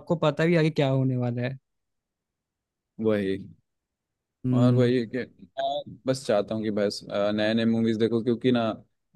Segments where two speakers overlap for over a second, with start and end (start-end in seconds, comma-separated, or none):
none